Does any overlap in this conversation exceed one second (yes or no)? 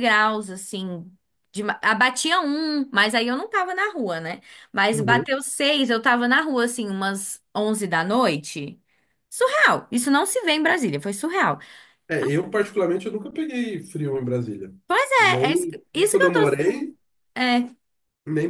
yes